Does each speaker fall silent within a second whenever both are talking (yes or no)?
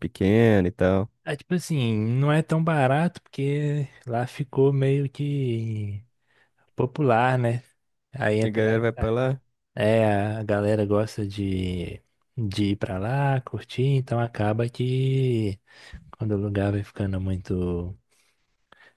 yes